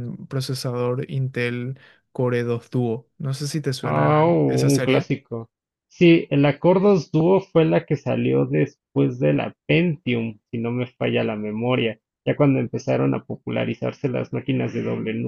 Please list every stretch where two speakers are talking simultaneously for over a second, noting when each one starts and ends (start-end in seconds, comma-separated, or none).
3.8-5.1